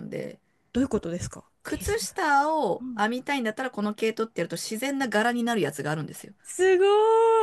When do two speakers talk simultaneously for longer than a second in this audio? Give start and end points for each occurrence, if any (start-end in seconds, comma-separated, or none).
none